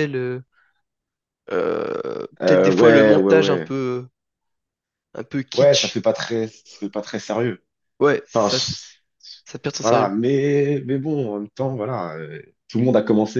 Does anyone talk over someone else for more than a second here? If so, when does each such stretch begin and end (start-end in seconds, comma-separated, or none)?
2.4-3.7